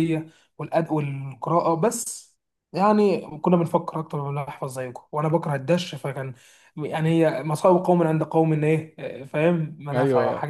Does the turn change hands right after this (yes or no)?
yes